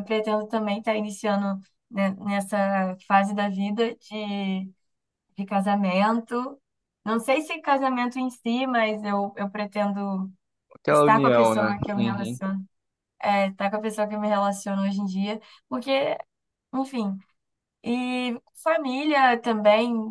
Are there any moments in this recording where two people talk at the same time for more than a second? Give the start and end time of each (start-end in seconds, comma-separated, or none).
10.9-12.4